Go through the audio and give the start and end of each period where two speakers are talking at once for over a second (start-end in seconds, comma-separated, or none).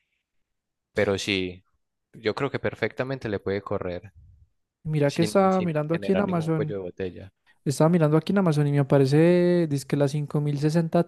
5.1-6.7